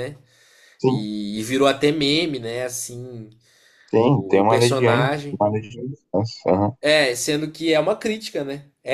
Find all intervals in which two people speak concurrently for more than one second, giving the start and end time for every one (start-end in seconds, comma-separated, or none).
4.1-5.4